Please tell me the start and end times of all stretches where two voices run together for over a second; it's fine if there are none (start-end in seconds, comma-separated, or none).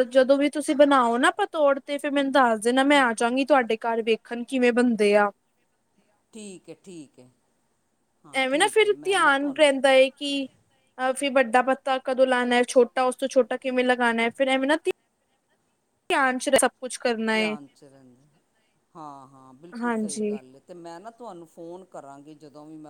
none